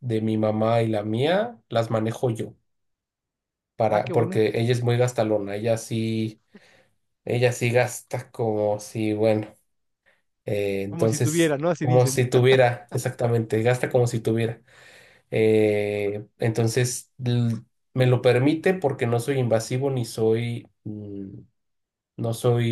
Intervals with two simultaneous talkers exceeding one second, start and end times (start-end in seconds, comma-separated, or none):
10.9-12.2